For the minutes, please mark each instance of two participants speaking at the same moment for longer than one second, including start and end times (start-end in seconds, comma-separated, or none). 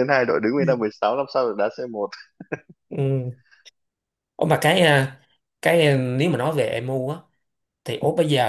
none